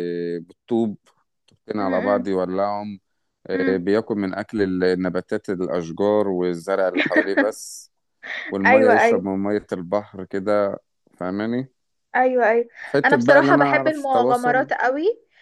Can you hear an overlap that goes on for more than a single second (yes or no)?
yes